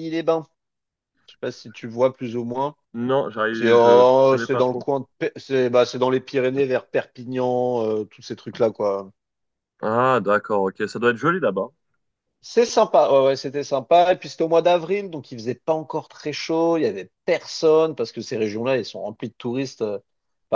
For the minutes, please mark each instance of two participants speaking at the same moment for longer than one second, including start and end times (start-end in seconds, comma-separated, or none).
3.5-4.9